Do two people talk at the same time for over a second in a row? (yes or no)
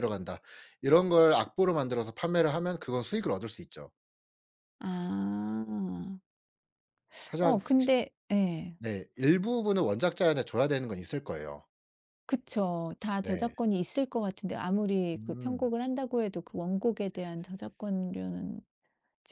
no